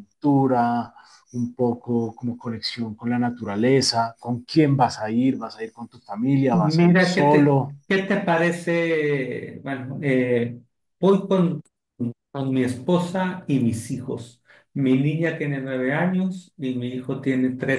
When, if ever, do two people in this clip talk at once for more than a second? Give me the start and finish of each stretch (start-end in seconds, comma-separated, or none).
6.5-7.8